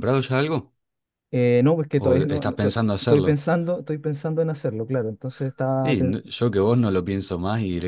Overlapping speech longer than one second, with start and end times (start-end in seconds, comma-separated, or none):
2.0-3.4